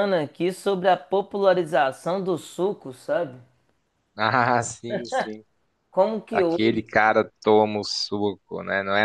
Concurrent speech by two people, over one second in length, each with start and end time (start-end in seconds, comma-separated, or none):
none